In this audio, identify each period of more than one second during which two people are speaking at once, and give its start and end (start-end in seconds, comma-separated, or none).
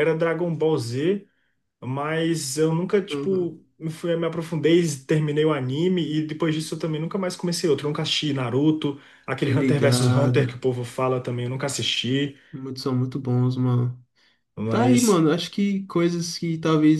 9.4-10.6